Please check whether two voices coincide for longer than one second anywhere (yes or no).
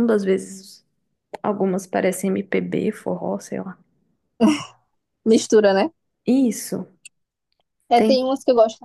no